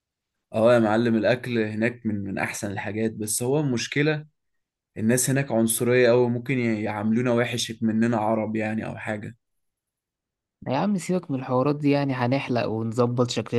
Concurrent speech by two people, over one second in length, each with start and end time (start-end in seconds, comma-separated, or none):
none